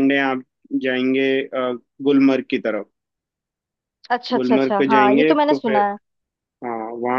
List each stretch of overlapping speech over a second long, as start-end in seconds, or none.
4.3-5.8